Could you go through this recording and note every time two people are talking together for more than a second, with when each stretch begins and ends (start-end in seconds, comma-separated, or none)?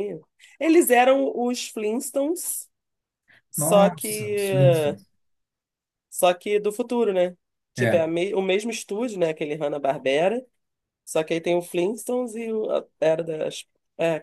3.5-5.0